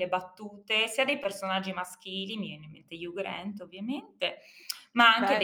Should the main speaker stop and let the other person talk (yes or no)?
no